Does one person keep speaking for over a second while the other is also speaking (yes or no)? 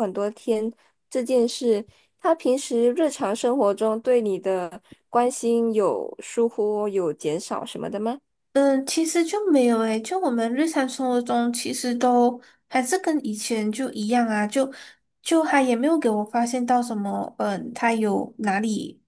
no